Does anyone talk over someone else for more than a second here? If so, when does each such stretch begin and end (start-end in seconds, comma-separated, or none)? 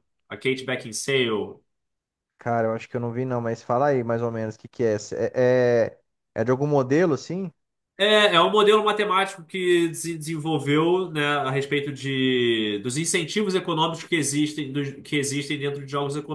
none